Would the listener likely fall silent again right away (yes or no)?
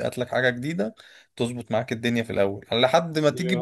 yes